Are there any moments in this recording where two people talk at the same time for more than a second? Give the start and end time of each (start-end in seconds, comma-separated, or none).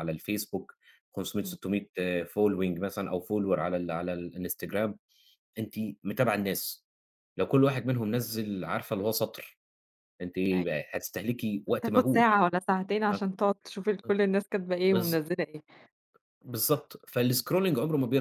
none